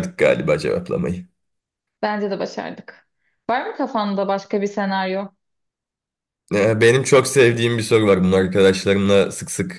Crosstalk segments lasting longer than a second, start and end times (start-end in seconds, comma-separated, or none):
none